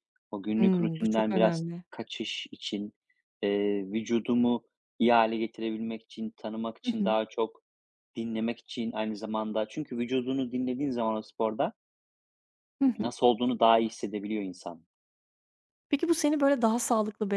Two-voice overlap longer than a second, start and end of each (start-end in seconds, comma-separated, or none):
0.6-1.8